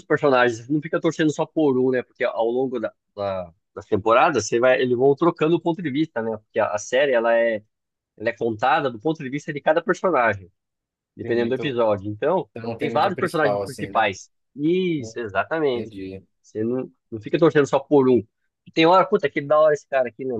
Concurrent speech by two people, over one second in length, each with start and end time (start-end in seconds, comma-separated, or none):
12.6-14.1